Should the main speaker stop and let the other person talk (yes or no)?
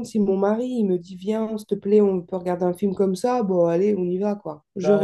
yes